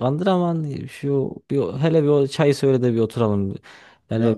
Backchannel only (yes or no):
yes